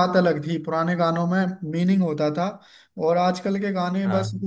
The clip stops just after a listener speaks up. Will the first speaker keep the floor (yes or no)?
yes